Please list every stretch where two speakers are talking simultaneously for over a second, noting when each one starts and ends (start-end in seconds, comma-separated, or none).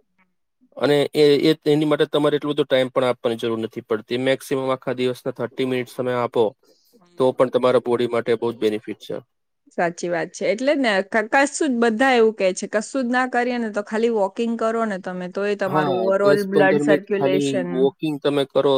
15.7-17.7